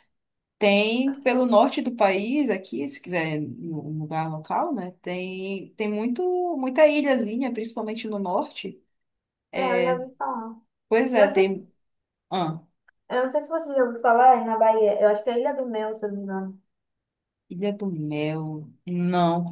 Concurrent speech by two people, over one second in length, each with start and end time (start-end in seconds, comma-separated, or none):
none